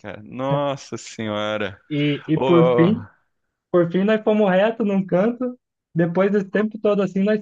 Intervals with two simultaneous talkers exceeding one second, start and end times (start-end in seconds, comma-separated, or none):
none